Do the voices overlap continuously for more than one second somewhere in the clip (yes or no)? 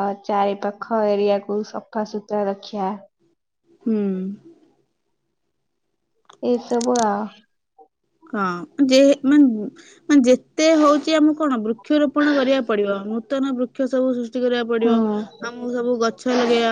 no